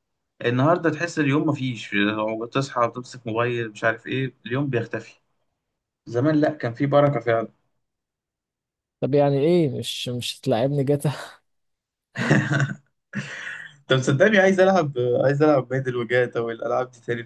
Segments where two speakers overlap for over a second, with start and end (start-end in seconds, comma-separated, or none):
none